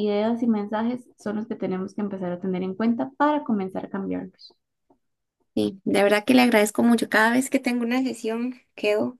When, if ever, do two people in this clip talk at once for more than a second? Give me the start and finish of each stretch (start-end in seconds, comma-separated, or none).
none